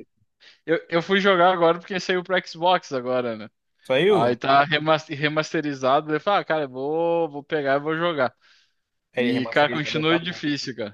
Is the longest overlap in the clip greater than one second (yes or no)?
yes